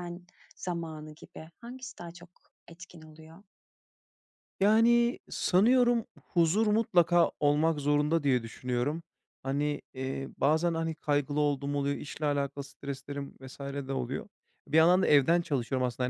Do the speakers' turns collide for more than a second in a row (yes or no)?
no